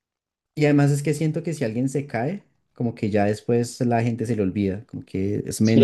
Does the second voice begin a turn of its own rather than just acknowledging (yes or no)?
yes